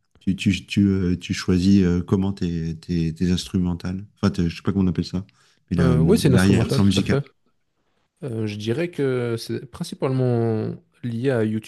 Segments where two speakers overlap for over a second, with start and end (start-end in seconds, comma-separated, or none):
5.8-7.2